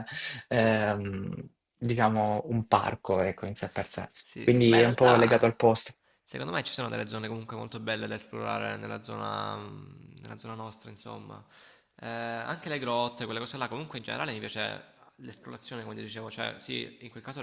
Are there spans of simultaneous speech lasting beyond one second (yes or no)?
yes